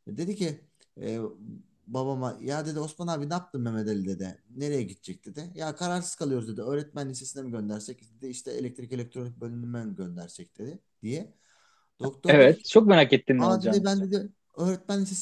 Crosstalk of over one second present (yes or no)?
no